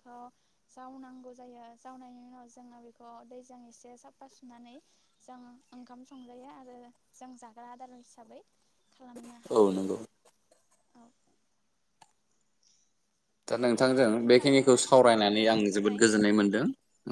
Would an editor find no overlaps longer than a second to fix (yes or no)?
no